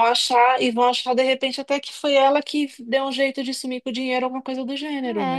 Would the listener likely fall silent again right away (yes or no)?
no